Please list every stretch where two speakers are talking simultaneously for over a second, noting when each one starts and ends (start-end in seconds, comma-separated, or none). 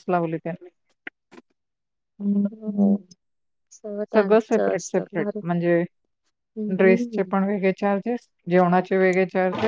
none